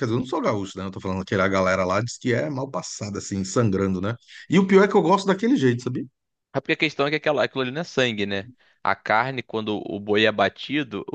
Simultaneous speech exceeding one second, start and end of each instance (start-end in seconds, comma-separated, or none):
none